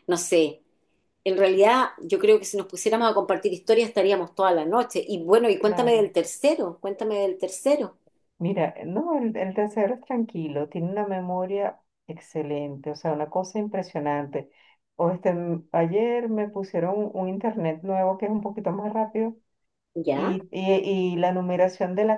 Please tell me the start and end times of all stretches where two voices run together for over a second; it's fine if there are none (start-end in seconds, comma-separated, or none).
none